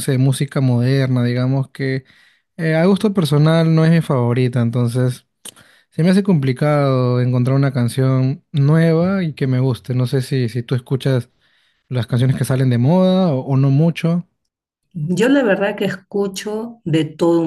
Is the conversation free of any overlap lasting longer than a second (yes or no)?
yes